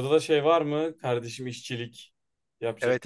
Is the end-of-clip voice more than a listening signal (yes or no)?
yes